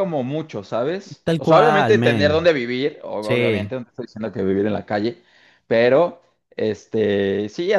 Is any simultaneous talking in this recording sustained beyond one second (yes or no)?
yes